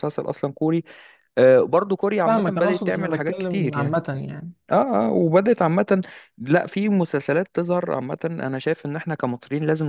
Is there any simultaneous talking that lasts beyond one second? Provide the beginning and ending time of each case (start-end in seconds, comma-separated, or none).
2.2-4.0